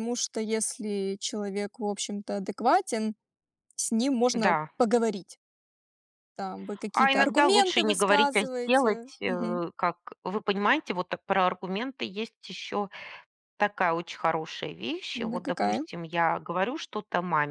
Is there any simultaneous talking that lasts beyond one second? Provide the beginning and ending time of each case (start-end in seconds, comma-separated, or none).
6.9-9.6